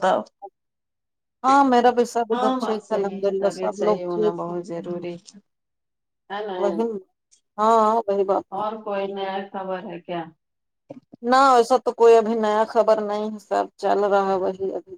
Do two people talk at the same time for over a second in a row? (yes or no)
yes